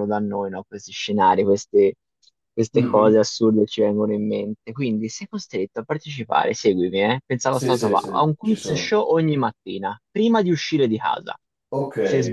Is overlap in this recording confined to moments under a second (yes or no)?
no